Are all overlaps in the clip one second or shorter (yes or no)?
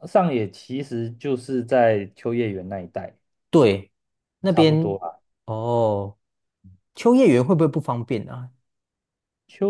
yes